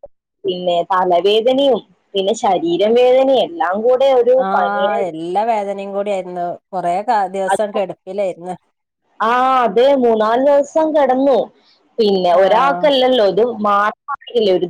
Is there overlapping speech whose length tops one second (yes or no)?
no